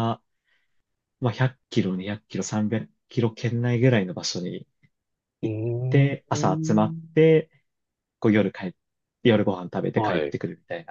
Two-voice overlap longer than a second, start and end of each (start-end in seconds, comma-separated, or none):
5.4-7.2